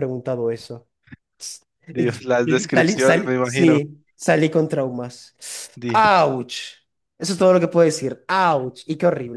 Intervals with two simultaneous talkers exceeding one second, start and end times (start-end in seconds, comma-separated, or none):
2.4-3.8